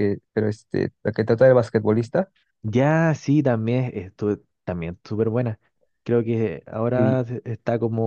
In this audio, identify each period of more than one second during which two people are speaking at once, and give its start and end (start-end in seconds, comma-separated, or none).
none